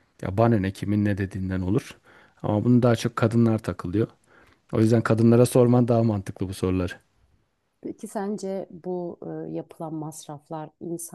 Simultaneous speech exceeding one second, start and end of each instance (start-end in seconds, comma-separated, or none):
none